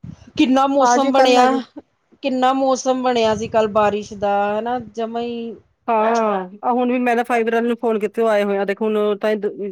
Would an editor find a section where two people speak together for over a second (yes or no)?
no